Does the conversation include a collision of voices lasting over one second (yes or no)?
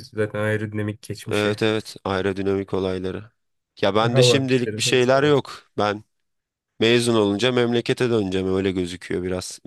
yes